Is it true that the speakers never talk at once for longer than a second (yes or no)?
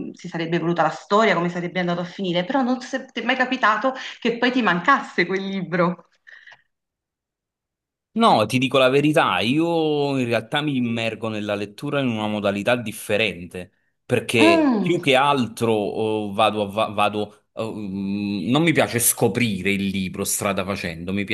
yes